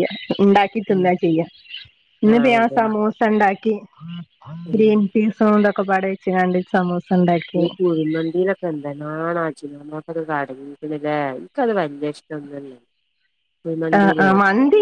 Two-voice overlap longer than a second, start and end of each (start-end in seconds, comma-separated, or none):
none